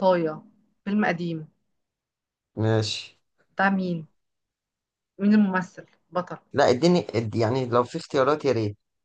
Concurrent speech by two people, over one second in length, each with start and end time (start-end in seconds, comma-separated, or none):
none